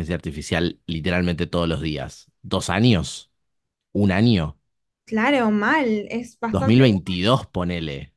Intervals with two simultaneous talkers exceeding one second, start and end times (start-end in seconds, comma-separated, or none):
none